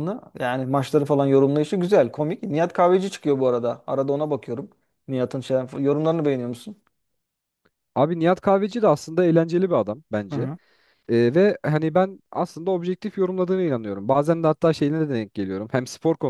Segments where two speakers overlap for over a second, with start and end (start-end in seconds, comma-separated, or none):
none